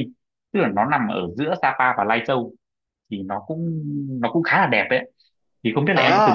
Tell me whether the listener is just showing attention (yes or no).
no